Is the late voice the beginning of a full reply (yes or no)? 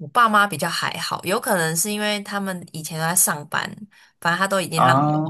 no